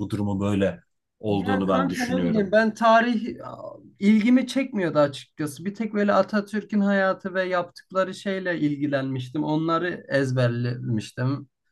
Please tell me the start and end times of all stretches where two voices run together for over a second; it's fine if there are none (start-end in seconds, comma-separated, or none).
1.3-2.5